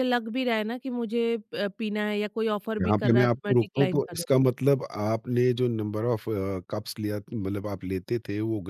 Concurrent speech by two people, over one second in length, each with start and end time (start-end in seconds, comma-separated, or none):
2.8-4.5